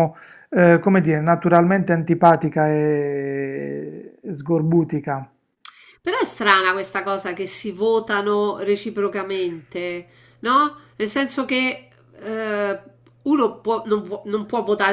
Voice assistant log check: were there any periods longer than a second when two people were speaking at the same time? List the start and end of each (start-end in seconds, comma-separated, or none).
none